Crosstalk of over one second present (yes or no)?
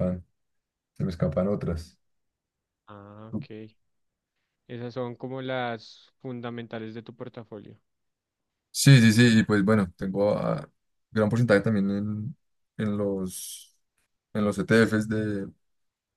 no